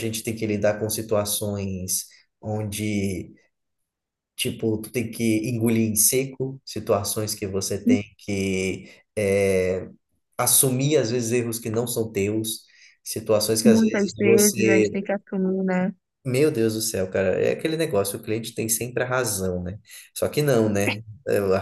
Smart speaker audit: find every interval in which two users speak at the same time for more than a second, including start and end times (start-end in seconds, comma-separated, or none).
13.7-15.1